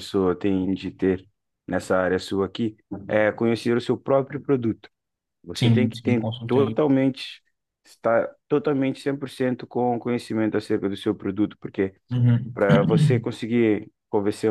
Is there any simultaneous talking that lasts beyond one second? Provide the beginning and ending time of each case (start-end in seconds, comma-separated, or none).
5.6-6.8